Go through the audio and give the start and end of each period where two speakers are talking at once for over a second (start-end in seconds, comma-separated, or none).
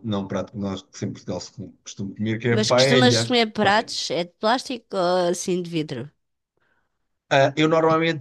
2.5-3.9